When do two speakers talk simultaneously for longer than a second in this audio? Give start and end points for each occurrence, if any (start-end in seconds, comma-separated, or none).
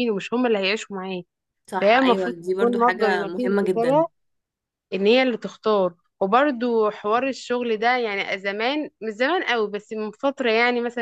1.8-4.0